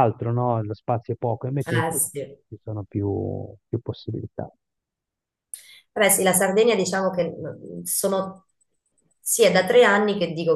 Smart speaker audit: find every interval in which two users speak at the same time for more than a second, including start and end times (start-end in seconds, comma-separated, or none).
none